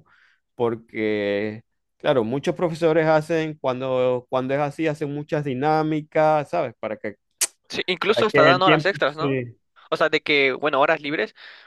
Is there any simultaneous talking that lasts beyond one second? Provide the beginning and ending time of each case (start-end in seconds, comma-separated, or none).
8.1-9.4